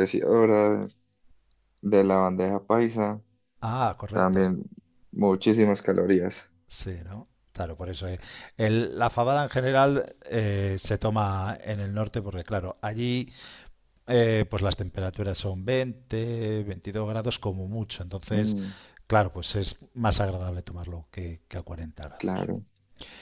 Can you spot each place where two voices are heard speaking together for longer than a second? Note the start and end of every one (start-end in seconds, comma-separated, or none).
none